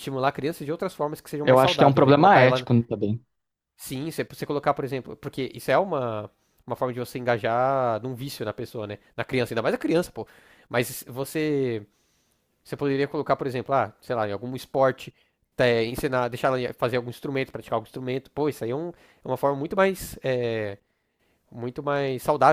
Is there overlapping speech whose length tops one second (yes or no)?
yes